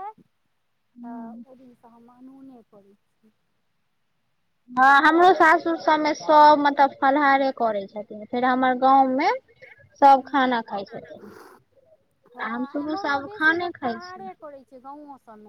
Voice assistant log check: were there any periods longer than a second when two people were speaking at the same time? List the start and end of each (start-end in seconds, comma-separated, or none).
12.4-14.2